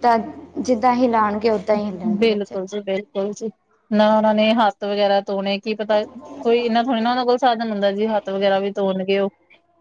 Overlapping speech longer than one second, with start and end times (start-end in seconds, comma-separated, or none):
none